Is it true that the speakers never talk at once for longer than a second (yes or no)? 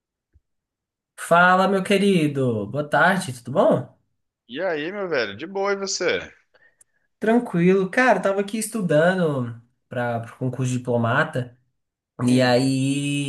yes